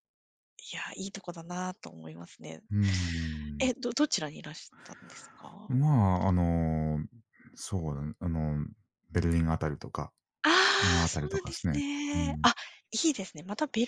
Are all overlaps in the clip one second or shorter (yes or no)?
no